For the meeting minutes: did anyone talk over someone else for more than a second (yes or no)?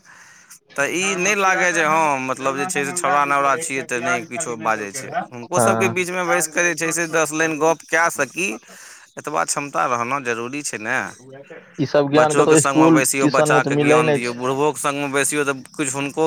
yes